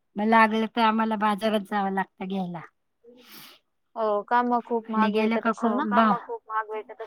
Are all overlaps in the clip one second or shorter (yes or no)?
yes